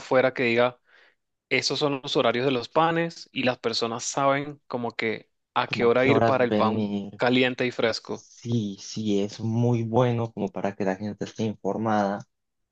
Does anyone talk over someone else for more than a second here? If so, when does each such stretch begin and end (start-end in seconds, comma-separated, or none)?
5.6-7.2